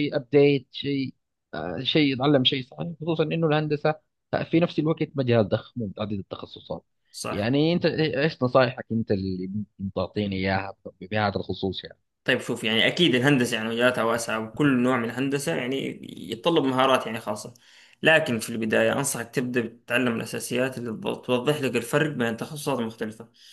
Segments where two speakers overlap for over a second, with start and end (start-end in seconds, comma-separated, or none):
none